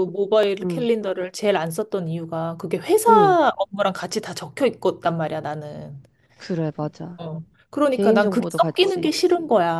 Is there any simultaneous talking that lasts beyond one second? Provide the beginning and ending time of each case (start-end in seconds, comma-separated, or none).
7.9-9.1